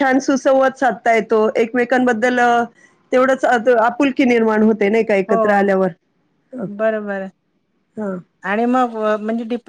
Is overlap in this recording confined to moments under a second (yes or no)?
yes